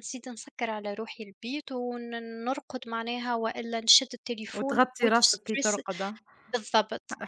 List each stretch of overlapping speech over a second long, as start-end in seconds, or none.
4.5-5.8